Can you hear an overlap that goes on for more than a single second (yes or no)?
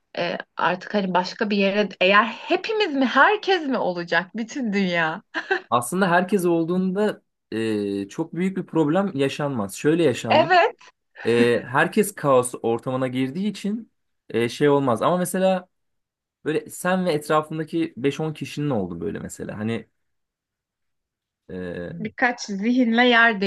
no